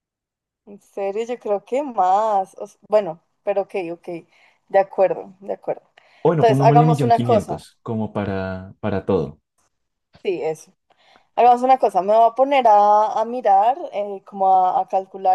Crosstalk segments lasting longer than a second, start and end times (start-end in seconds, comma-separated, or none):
6.3-7.6